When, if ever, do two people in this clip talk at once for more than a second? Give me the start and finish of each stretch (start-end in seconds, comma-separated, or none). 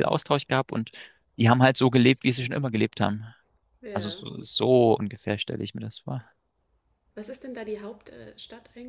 none